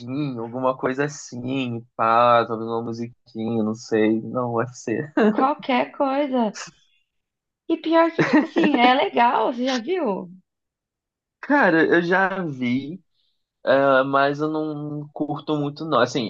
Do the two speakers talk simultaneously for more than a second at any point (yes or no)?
no